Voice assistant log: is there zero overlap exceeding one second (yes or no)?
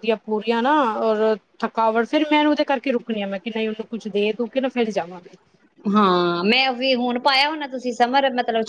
yes